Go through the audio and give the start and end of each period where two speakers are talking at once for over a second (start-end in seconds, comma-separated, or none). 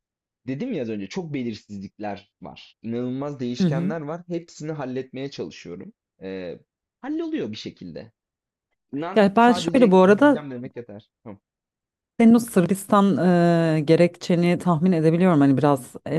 9.1-10.4